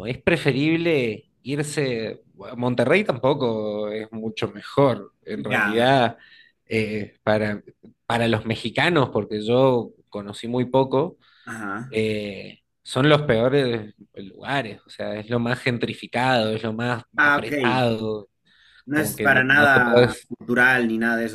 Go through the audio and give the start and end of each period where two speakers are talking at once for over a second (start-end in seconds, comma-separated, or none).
18.9-20.3